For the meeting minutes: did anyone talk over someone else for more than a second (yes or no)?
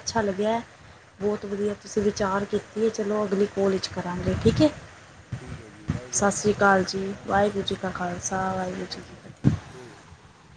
yes